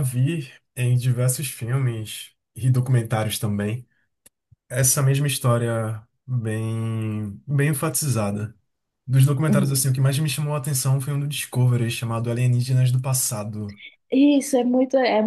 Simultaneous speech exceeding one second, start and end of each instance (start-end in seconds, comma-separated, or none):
none